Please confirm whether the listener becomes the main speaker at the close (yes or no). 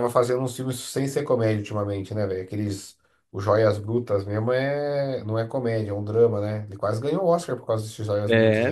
yes